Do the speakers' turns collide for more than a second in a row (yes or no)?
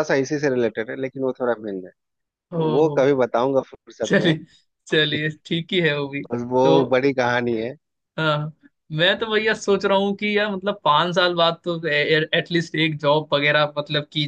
no